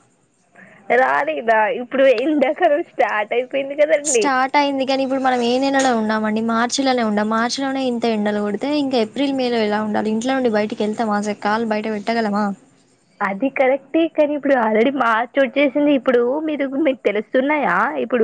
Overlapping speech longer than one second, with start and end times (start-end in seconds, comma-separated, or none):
none